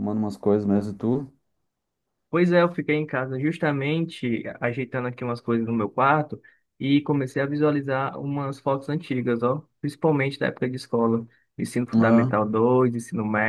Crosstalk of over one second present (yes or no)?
no